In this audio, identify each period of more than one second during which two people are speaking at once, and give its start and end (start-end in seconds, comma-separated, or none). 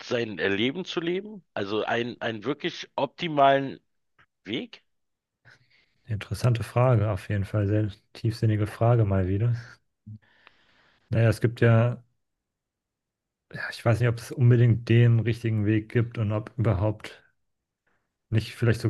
none